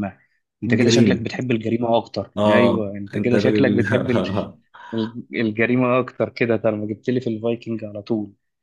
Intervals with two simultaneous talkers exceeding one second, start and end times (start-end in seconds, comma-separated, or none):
2.4-3.8